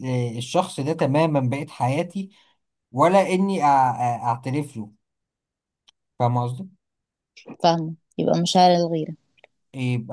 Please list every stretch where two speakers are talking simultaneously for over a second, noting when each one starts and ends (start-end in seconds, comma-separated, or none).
none